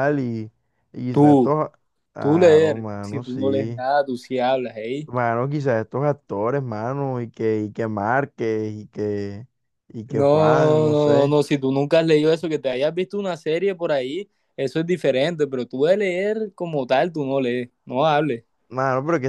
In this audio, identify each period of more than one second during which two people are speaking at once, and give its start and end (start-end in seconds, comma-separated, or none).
2.2-3.8, 10.1-11.4